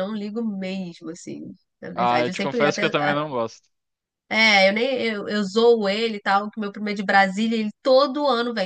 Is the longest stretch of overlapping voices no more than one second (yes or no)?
no